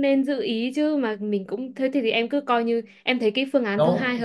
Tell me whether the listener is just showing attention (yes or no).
no